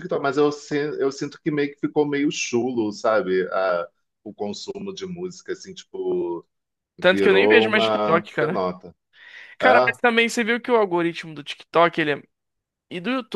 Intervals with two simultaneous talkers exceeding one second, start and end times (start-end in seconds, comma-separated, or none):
7.1-8.6